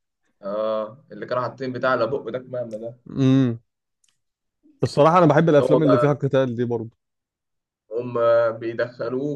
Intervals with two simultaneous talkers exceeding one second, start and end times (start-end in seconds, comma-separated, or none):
none